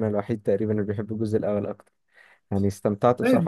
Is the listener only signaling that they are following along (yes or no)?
no